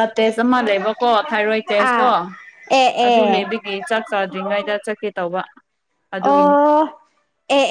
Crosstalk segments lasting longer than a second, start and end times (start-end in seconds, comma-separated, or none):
none